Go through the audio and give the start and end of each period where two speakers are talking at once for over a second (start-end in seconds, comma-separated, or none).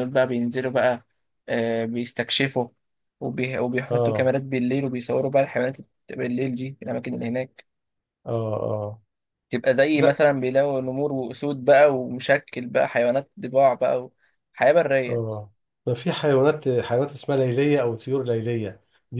none